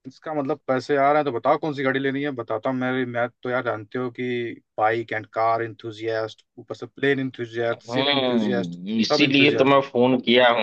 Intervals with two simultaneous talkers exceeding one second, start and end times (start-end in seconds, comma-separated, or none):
7.7-9.8